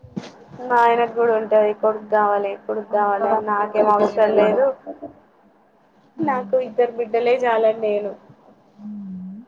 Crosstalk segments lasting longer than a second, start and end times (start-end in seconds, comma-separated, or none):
3.0-4.6